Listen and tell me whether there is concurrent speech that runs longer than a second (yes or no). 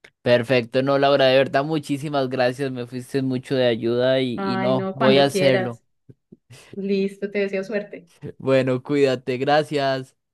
yes